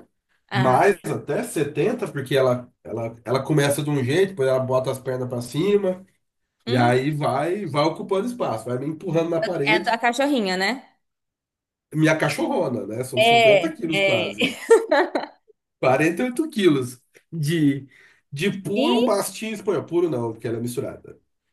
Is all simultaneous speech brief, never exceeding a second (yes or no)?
no